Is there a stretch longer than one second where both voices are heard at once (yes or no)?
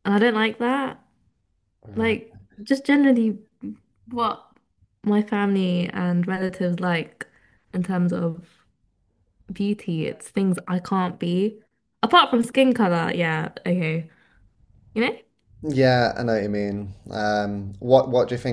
no